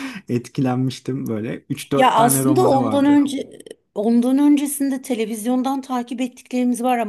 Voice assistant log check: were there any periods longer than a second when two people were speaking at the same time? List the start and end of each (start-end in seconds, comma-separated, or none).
1.9-3.2